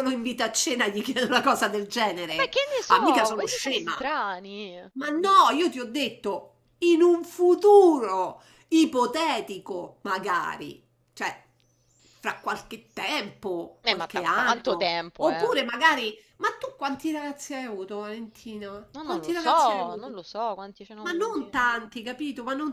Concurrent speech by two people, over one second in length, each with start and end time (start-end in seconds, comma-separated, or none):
2.3-4.0, 13.8-15.5, 18.9-20.1